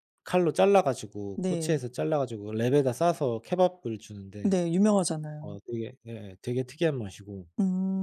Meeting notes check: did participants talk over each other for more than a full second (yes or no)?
no